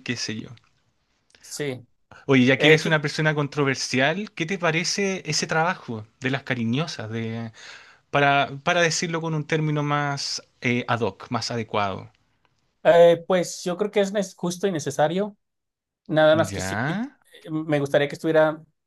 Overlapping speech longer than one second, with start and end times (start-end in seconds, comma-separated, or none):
none